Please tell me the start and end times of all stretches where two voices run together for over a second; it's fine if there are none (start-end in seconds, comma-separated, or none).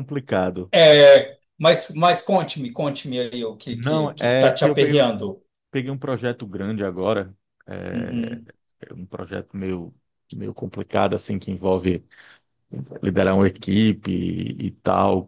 3.7-5.0